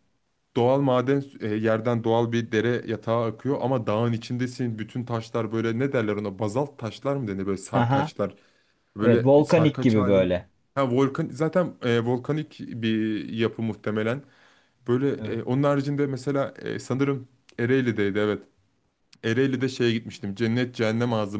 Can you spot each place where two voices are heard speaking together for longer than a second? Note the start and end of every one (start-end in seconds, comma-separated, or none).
9.0-10.4